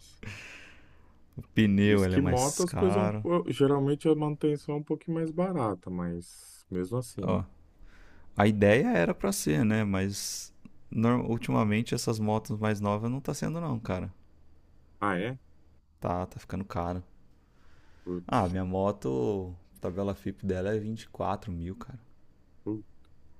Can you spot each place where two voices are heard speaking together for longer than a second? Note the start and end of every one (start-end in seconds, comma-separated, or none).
1.9-3.3